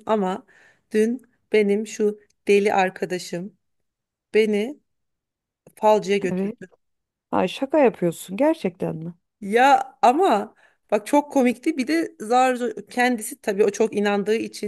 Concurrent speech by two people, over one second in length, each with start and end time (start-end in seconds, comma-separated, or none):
none